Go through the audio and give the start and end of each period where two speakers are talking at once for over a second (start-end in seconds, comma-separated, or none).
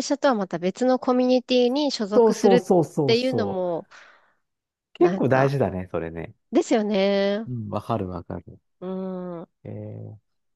2.1-3.7